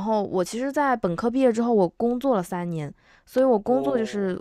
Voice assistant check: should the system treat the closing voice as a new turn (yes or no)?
no